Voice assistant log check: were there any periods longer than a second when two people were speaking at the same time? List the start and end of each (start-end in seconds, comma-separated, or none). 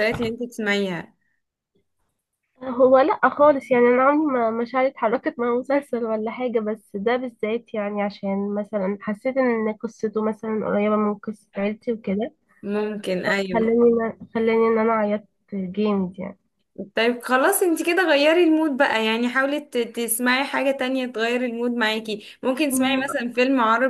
none